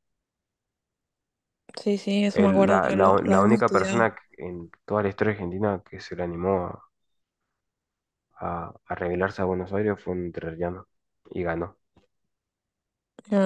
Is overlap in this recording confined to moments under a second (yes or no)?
no